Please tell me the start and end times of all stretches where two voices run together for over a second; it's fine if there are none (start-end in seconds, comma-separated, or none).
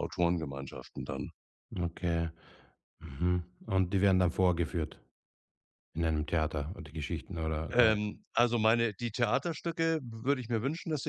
none